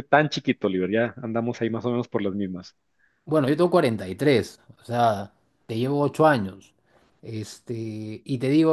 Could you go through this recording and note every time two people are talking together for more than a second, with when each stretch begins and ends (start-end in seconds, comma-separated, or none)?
none